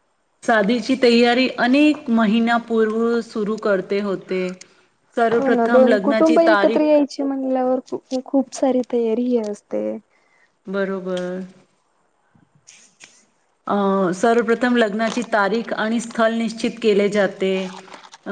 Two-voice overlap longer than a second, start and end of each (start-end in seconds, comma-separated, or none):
5.4-7.0